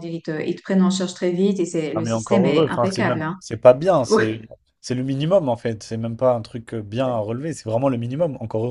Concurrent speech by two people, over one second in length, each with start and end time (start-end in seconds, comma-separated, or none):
1.9-3.4